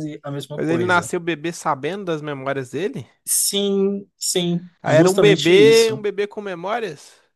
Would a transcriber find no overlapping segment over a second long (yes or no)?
no